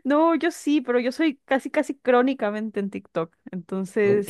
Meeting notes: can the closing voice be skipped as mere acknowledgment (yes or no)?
no